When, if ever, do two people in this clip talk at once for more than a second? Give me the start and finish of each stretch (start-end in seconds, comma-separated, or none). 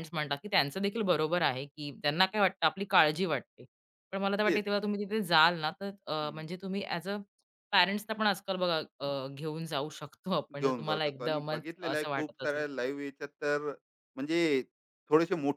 10.6-12.7